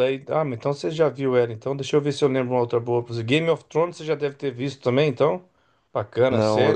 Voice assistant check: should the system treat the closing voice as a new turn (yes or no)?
yes